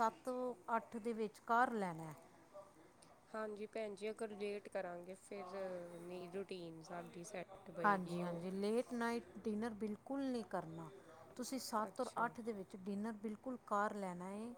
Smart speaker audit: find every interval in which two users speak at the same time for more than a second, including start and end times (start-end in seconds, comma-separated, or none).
none